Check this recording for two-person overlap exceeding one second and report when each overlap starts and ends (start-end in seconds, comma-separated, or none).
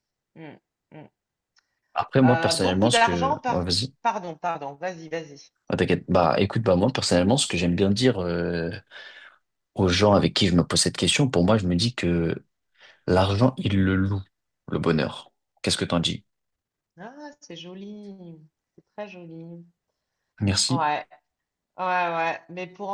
2.2-3.9